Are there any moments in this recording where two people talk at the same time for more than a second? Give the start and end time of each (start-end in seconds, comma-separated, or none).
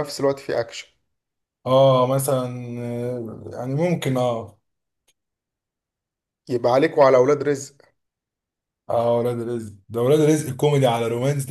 none